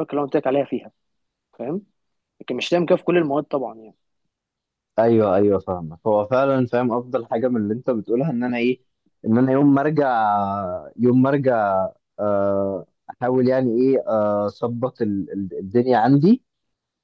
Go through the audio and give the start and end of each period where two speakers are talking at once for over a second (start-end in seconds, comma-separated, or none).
none